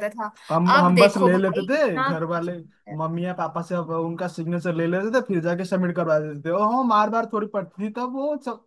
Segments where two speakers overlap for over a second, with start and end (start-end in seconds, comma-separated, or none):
0.8-2.5